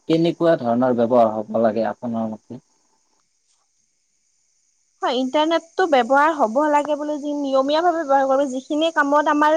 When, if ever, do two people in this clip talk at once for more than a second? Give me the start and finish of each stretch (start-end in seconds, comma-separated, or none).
none